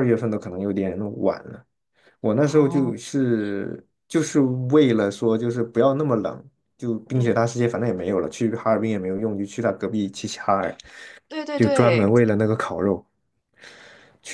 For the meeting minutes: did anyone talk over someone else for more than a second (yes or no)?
no